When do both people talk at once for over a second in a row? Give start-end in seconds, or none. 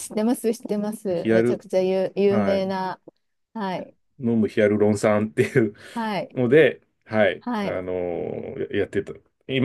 none